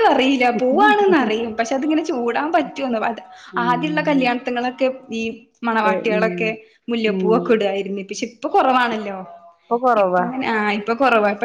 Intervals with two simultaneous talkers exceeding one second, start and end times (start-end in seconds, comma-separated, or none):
none